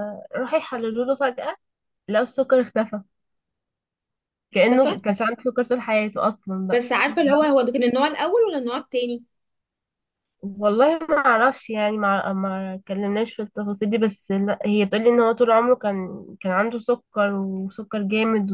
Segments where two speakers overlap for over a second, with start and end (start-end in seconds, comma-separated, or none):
none